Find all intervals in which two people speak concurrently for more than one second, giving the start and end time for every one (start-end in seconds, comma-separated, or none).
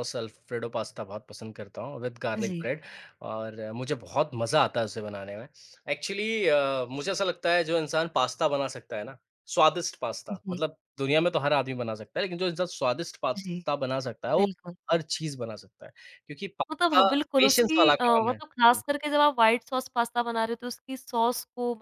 16.7-18.8